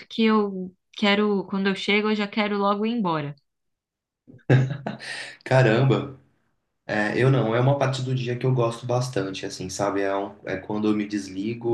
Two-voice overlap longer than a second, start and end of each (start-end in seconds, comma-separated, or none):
none